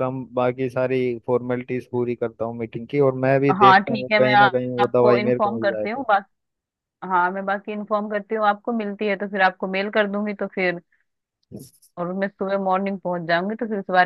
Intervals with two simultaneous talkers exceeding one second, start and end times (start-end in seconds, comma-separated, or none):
3.6-6.0